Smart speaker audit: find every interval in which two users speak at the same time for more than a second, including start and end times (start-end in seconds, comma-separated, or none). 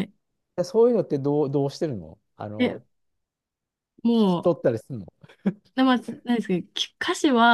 none